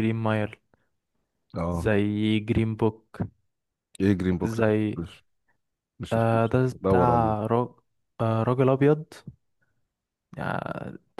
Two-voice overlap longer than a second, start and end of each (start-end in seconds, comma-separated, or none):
6.1-7.4